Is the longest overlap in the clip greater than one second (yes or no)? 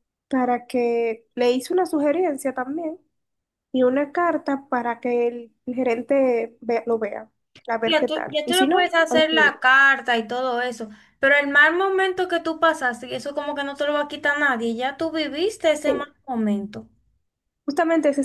yes